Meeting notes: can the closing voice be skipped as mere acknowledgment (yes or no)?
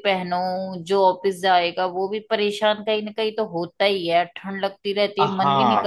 no